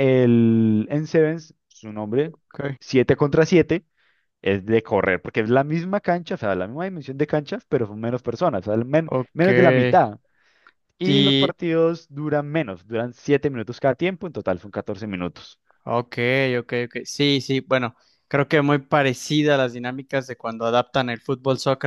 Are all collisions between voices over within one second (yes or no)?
yes